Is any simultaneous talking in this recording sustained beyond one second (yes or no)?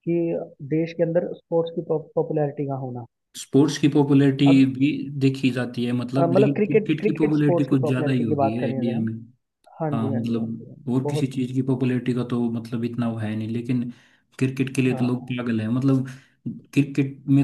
yes